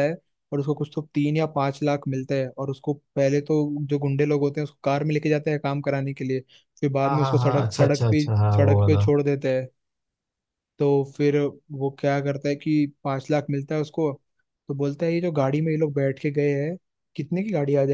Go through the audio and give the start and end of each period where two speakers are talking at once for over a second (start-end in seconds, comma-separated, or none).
7.0-9.0